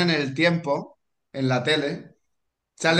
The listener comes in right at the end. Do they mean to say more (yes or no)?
no